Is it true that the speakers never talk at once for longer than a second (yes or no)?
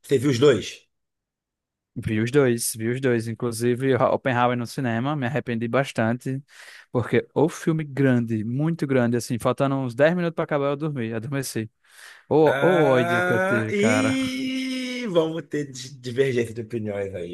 no